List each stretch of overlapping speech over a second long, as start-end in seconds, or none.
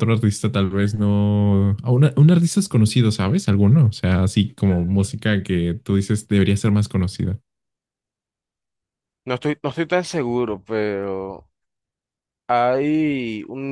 none